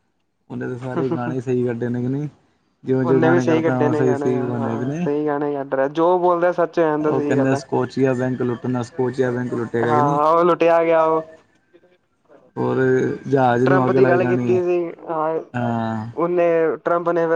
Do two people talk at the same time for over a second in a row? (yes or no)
yes